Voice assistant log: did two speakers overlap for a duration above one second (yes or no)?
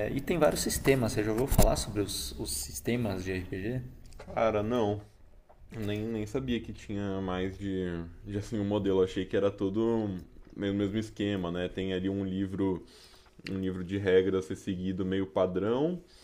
no